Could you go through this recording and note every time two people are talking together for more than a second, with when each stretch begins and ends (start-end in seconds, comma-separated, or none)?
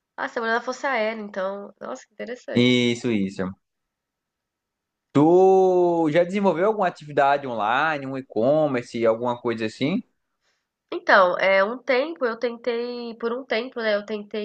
none